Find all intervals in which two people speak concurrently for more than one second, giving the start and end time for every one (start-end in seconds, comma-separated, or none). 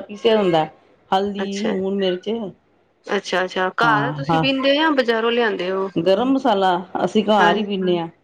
none